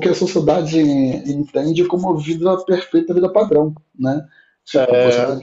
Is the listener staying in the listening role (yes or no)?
yes